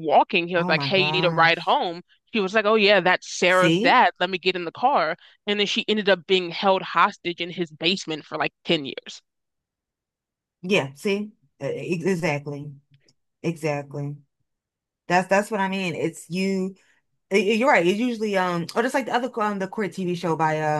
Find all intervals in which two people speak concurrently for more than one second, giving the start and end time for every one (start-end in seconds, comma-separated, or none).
0.6-1.8